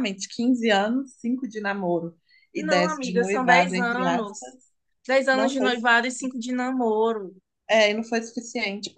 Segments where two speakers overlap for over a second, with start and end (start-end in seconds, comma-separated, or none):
2.6-4.6